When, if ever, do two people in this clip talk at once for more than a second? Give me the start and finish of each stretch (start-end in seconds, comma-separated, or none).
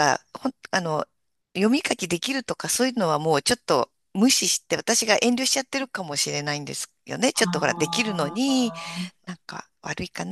7.3-8.7